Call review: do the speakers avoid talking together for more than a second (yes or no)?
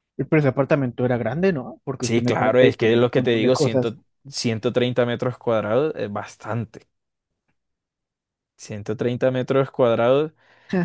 no